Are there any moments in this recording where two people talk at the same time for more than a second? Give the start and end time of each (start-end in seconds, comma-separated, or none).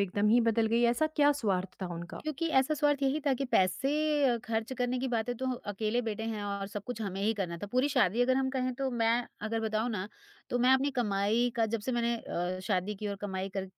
none